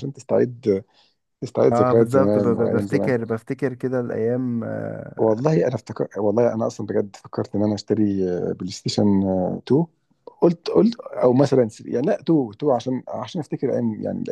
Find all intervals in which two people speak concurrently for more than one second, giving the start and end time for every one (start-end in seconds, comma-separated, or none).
1.7-3.2